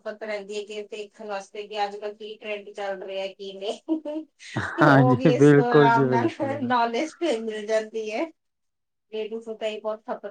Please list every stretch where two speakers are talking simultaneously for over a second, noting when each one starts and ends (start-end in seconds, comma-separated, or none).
4.8-6.7